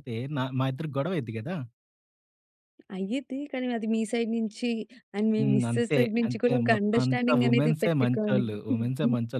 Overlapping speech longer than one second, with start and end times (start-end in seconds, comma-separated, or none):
5.4-8.4